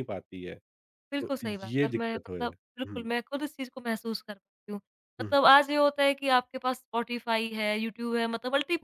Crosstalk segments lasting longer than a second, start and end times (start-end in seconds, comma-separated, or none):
1.2-3.1